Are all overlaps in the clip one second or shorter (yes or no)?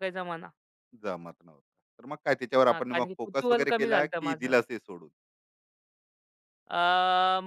no